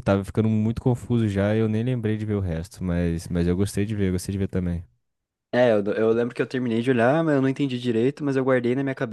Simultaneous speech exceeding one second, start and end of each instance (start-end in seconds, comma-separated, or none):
none